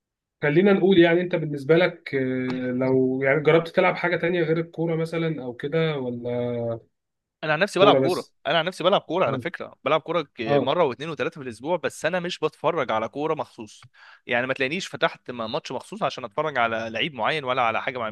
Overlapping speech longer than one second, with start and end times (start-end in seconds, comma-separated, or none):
none